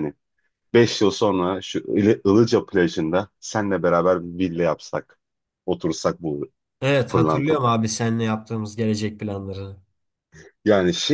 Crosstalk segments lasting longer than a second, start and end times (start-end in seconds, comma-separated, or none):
none